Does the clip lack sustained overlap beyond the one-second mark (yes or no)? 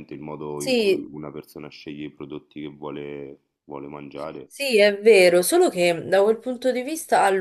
yes